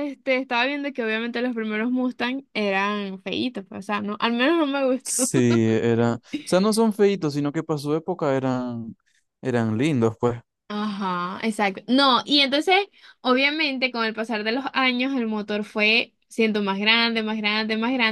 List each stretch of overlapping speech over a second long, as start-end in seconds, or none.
none